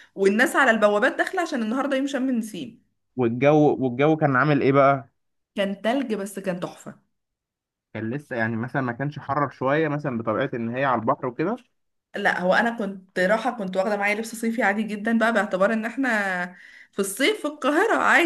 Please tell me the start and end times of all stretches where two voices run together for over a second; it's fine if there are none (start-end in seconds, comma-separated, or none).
none